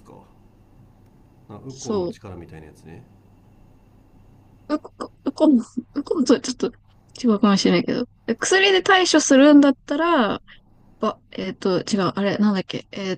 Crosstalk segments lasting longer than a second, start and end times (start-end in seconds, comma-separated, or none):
none